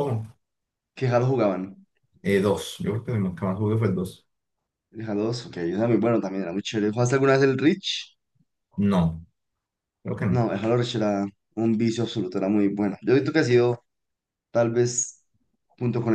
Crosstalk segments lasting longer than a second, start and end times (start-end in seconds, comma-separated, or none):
none